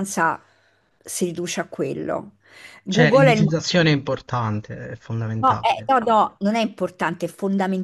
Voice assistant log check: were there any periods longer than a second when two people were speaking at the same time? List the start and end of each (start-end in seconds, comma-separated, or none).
none